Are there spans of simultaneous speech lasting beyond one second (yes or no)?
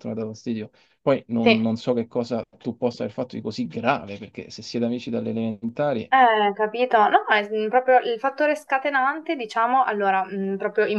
no